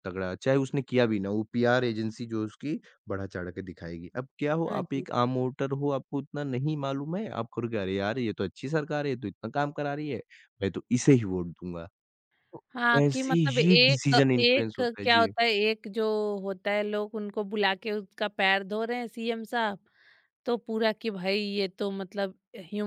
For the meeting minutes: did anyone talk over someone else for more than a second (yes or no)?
yes